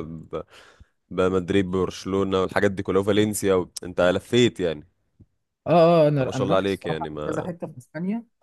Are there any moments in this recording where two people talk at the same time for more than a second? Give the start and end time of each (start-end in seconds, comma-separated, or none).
6.2-7.5